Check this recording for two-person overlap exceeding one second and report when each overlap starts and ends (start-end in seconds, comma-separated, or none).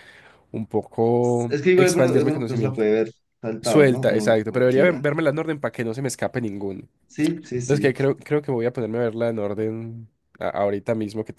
1.5-2.8, 3.6-5.0